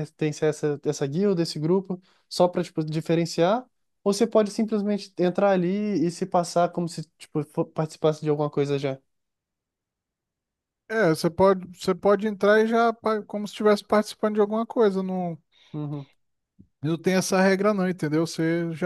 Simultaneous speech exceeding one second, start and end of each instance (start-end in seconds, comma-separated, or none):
none